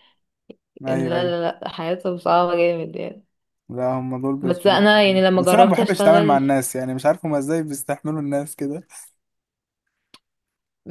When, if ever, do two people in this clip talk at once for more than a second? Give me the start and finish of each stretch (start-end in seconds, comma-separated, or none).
5.3-6.5